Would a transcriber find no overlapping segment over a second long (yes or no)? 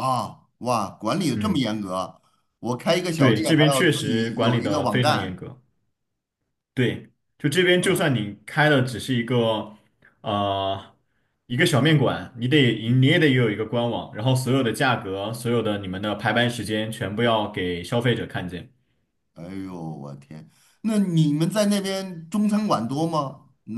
no